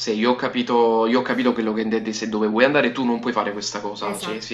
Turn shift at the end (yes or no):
yes